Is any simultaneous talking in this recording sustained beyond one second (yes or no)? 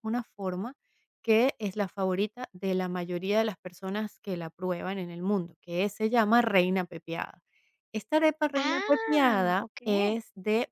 yes